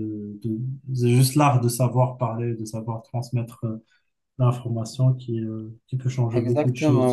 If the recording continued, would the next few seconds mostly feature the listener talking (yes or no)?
yes